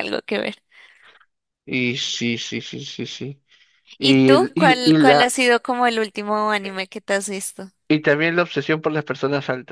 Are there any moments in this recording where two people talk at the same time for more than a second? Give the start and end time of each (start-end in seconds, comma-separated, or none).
4.0-5.3